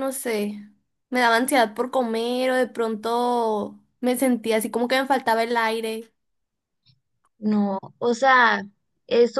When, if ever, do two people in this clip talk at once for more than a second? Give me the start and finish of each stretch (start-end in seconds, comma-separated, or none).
none